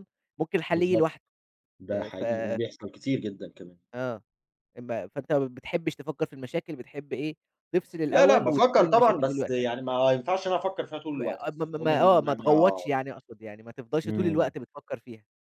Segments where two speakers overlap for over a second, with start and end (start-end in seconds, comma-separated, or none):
8.1-9.7, 11.2-12.8